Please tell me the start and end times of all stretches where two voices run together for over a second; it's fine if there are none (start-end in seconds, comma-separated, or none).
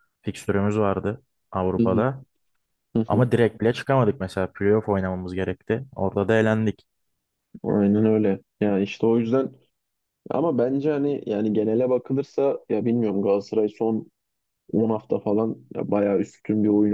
none